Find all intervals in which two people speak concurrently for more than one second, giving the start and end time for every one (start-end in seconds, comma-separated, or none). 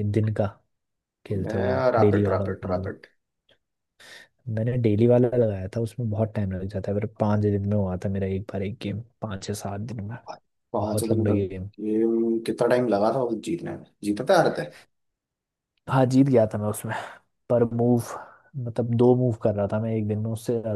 1.5-2.9